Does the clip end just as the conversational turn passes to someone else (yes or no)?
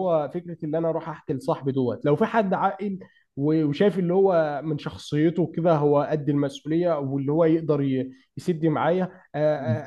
no